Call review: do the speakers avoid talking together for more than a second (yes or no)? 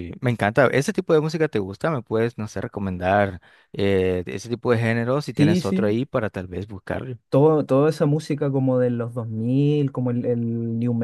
yes